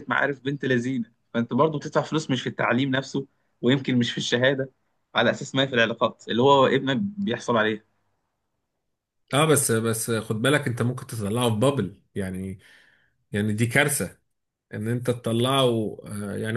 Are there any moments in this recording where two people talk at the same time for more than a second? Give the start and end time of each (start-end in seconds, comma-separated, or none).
none